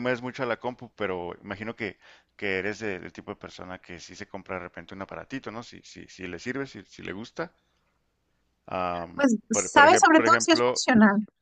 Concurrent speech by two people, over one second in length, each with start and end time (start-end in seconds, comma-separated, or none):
9.1-10.8